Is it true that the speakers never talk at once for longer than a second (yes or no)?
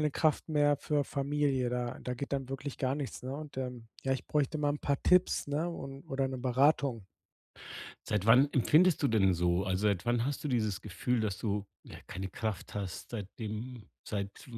yes